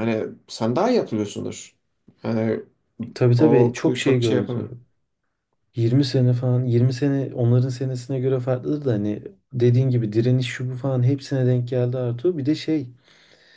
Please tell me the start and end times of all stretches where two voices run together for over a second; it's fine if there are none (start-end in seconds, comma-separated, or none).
3.4-4.7